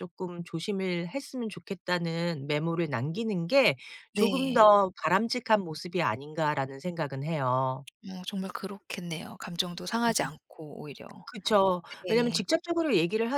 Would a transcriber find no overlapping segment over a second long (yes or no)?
yes